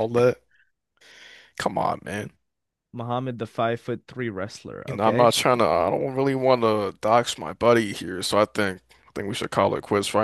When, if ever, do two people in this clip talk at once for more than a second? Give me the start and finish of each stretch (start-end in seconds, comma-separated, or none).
none